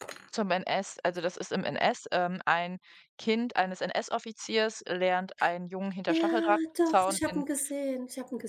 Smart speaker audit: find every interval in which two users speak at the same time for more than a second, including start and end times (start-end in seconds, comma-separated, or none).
6.1-7.4